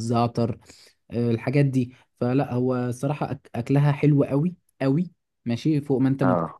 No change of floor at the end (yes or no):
yes